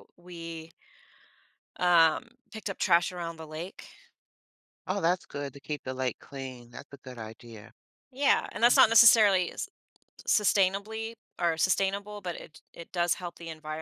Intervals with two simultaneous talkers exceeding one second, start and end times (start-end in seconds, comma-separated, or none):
none